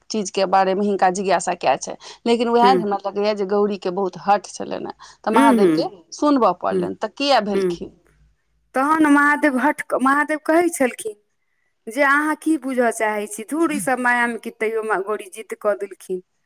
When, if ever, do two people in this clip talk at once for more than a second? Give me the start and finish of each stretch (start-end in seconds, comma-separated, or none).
none